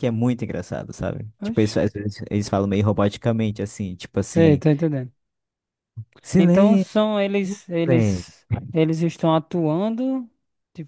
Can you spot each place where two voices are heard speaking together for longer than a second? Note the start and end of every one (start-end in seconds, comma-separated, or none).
none